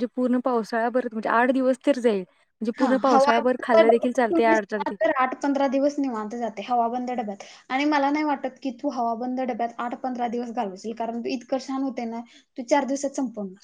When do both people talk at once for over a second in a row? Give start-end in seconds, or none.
2.8-4.6